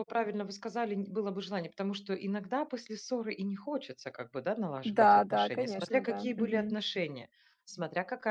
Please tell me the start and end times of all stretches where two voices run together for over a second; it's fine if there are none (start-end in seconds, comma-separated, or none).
4.8-6.8